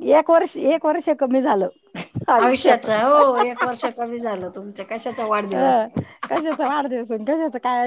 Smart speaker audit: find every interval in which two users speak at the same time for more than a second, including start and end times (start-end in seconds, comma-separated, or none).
none